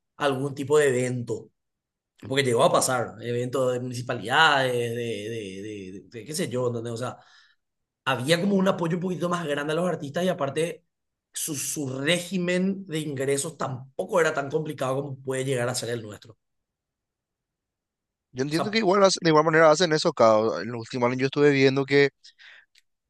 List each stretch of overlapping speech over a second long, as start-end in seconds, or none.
none